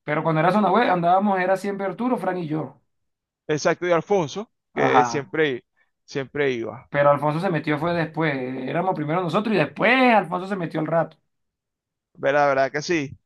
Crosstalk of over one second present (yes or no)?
no